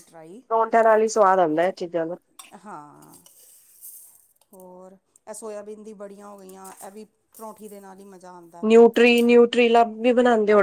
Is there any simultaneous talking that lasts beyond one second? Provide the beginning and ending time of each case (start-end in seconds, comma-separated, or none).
none